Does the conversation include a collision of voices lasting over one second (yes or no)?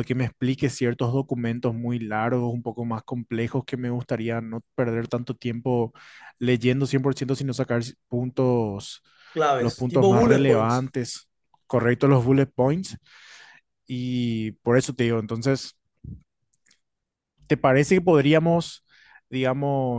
yes